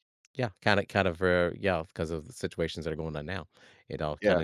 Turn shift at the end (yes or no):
no